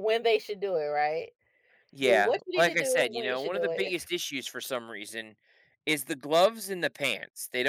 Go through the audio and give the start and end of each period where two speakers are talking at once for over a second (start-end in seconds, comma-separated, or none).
2.0-3.9